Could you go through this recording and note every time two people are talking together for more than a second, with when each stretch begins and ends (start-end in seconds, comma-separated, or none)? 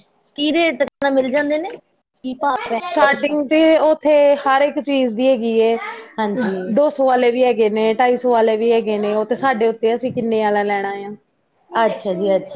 none